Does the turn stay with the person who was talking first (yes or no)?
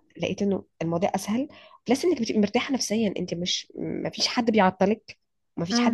no